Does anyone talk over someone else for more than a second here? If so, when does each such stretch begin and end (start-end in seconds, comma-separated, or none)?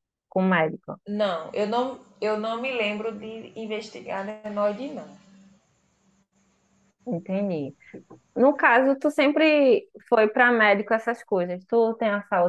none